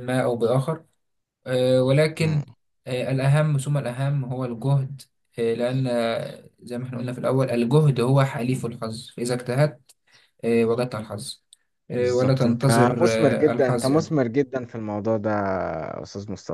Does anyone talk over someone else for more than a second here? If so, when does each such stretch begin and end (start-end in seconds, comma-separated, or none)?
12.0-14.2